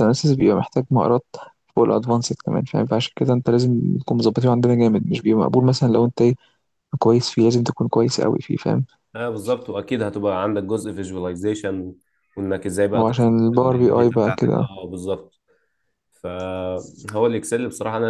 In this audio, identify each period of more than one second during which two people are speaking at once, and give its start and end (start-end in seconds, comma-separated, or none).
12.9-14.7